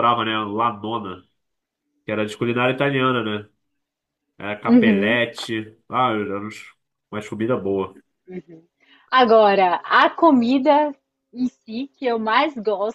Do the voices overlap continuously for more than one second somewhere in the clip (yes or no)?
no